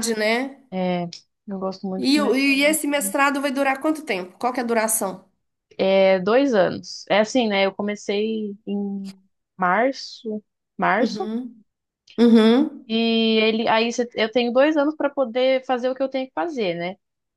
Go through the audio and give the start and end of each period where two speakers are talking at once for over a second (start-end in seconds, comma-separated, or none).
2.0-3.2